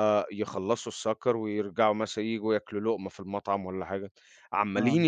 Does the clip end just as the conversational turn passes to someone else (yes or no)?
no